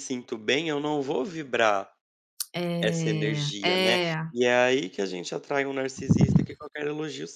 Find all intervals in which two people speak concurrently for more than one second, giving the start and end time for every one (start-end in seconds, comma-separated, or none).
2.8-4.3